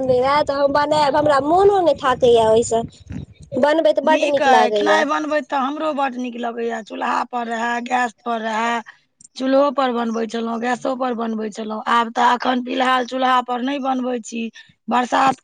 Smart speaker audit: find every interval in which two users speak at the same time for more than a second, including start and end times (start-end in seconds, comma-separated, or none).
none